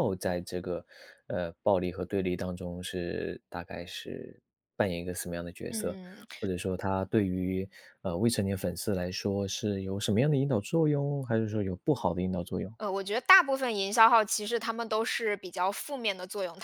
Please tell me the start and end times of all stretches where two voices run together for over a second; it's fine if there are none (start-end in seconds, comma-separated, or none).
none